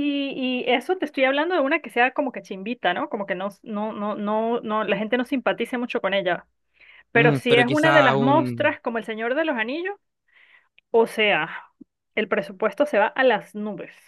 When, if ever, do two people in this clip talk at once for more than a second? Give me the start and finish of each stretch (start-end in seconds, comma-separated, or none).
7.2-8.8